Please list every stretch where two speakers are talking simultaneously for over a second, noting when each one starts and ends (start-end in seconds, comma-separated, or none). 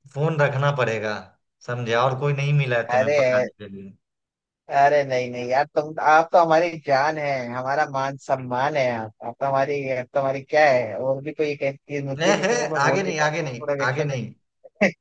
12.2-14.3